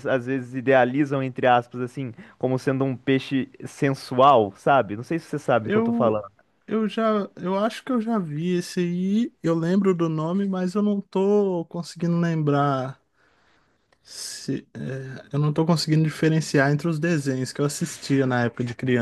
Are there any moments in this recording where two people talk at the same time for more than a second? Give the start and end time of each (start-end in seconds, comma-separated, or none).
none